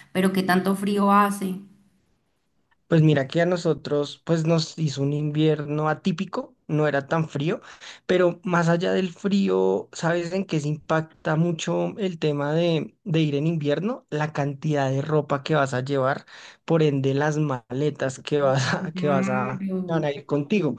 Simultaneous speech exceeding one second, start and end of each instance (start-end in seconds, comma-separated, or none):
18.8-20.1